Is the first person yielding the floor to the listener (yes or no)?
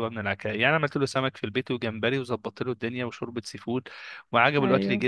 no